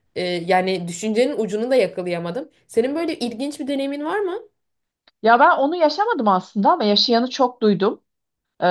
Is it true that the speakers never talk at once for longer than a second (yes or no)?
yes